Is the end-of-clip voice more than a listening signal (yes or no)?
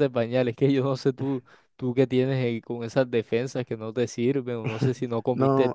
yes